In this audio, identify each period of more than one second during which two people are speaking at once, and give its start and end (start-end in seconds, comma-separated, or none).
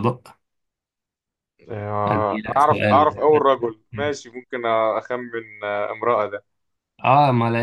2.1-3.4